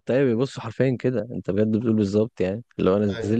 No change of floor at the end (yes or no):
yes